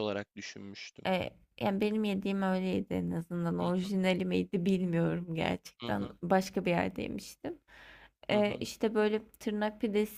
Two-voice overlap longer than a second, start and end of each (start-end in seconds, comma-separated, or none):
none